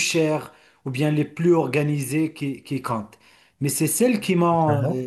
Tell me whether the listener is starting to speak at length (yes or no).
no